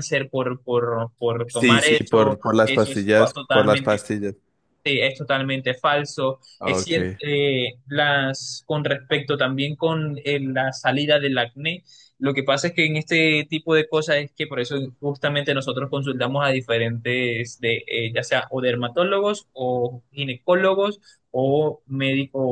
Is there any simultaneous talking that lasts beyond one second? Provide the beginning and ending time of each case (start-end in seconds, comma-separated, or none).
1.4-4.0